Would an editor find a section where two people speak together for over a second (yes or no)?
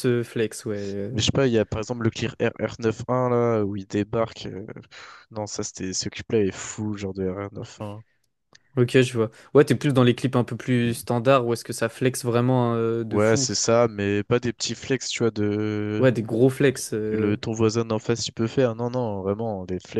no